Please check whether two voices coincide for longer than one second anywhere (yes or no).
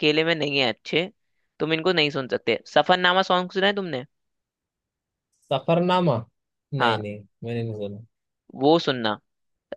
no